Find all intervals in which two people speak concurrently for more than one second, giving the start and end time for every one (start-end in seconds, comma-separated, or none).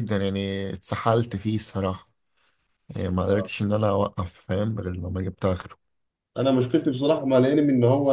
none